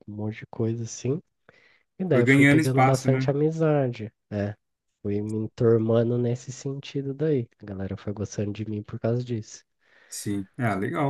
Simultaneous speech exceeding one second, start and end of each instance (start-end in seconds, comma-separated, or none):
2.1-3.3